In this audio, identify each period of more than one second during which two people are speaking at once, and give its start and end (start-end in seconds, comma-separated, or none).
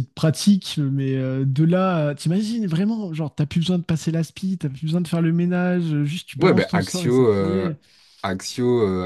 6.4-7.7